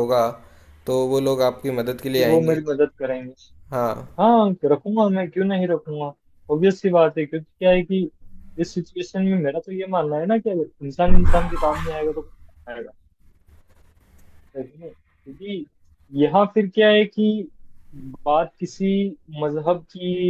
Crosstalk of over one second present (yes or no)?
no